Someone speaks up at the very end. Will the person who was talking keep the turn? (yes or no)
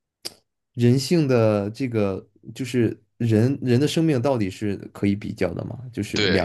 no